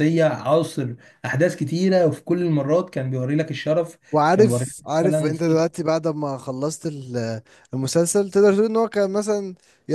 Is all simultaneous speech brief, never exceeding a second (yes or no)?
no